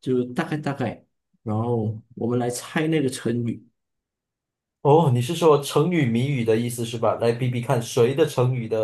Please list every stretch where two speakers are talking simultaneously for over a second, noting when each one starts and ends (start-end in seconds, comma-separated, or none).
none